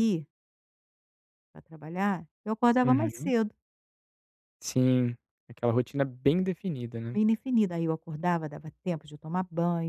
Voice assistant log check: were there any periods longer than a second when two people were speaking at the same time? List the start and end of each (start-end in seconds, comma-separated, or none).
none